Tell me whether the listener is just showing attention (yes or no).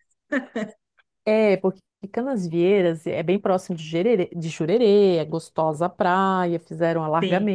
yes